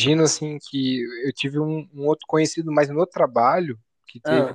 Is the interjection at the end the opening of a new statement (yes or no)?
no